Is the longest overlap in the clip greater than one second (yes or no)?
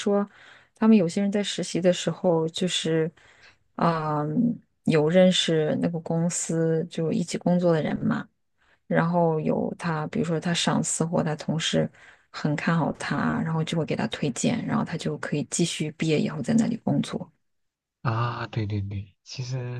no